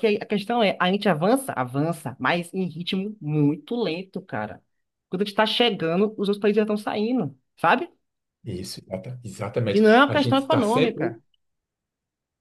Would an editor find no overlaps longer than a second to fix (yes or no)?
no